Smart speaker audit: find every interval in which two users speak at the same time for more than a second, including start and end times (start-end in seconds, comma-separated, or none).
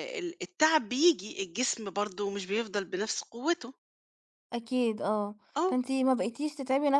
none